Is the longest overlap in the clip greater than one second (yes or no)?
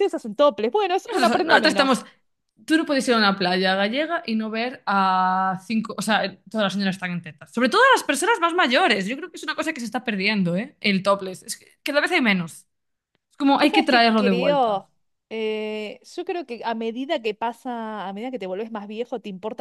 yes